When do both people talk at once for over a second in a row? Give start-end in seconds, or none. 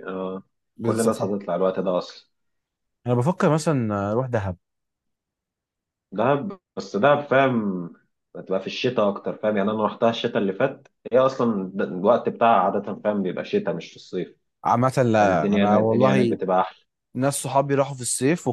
15.2-16.4